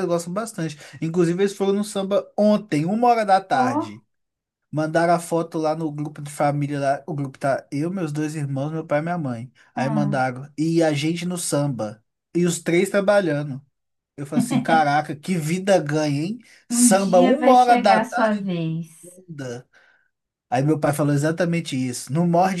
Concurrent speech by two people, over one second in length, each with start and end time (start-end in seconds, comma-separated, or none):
16.7-18.4